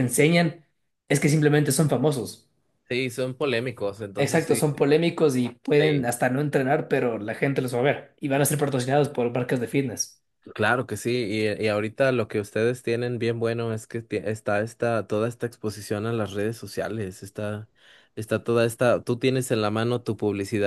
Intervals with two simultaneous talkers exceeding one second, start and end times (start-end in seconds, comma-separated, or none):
none